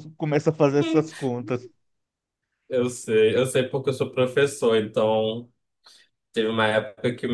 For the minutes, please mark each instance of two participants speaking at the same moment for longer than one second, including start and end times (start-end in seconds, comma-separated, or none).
none